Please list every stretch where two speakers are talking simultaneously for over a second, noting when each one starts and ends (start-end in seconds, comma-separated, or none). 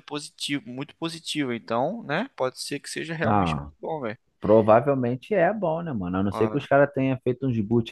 none